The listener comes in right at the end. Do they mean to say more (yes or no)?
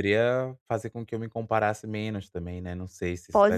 yes